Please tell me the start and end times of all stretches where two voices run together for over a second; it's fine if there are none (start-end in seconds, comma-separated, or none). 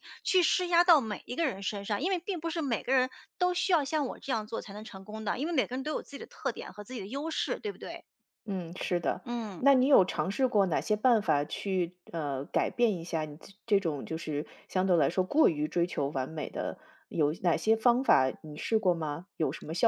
none